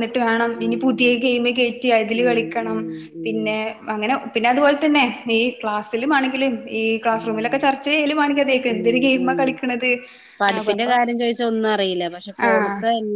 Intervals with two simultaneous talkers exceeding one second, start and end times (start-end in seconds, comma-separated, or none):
none